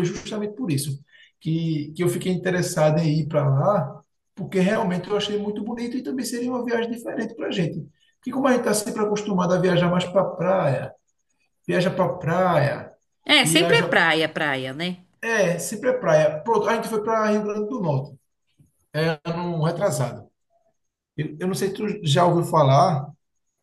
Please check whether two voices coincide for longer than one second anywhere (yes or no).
no